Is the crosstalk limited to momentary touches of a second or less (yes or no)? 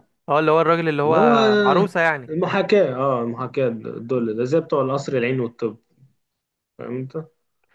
yes